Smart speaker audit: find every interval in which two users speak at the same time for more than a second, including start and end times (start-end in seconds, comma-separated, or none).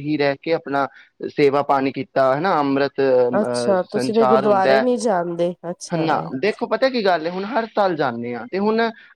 3.4-4.8